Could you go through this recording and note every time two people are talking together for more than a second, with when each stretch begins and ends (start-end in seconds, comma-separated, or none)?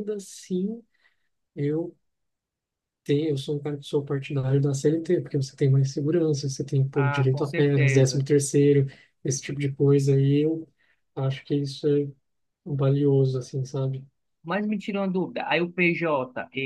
6.9-8.2